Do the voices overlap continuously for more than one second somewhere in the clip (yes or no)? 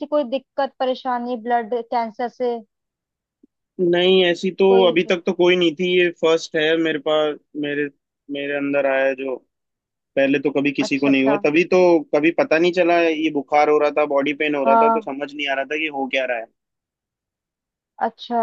no